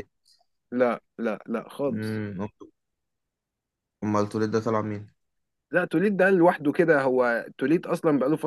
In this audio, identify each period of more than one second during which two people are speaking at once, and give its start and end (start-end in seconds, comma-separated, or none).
none